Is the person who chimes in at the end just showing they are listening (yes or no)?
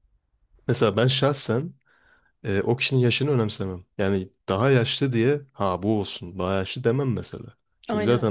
yes